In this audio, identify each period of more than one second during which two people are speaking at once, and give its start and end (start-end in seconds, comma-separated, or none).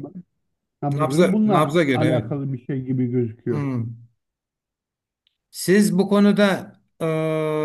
0.9-2.3